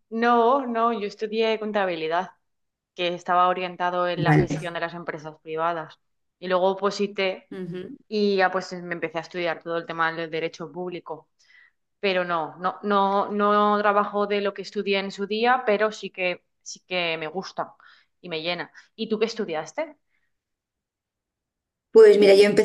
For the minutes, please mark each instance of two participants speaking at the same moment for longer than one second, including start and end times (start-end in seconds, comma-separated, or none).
none